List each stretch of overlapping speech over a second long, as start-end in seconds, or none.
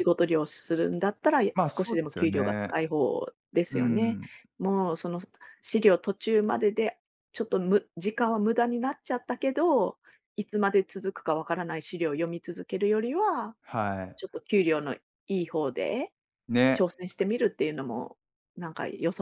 1.5-2.7